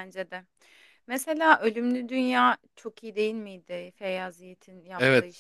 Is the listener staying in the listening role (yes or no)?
no